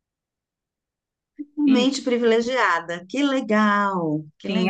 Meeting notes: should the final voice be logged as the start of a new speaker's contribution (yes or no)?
yes